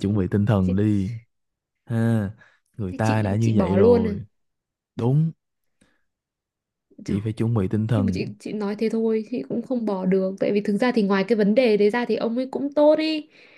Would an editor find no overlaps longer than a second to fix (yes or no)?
no